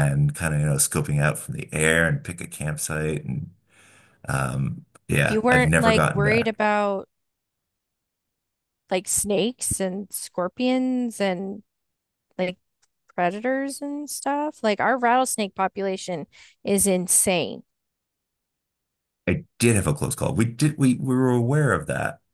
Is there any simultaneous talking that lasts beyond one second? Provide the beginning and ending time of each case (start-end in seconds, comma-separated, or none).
5.3-6.5